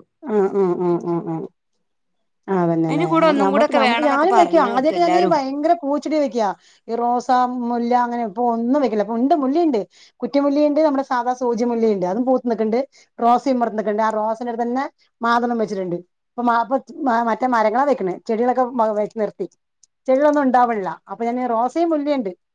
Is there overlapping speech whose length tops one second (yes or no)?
yes